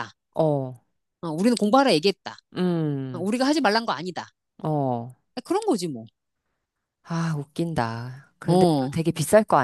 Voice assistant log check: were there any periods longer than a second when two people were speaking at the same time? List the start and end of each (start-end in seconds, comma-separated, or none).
none